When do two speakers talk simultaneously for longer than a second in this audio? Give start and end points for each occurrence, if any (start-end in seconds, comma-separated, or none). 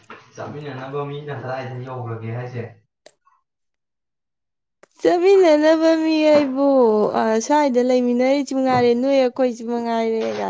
none